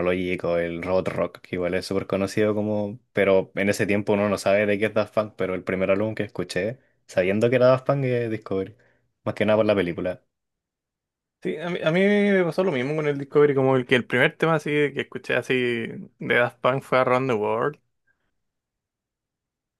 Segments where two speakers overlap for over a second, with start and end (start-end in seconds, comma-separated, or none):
none